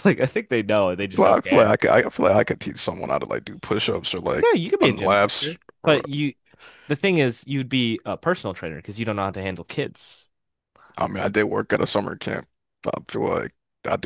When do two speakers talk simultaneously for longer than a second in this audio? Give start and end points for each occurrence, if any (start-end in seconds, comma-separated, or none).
4.3-6.0